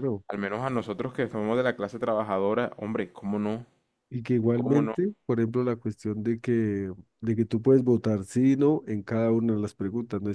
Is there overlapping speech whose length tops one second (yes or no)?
no